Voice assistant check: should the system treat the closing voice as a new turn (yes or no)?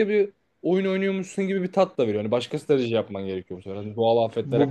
yes